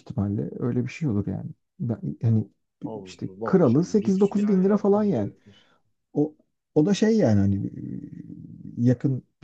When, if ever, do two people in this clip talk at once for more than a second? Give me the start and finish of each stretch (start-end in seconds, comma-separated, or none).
3.0-5.3